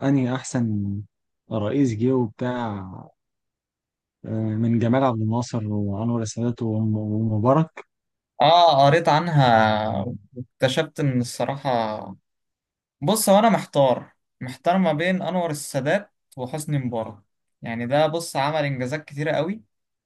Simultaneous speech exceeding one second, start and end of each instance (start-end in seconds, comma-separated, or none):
none